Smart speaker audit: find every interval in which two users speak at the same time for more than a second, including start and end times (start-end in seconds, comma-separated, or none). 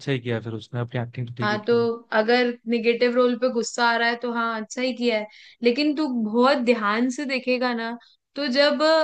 none